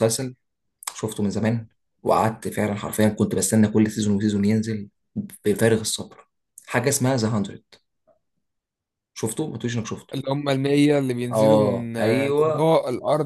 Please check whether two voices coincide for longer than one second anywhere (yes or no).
yes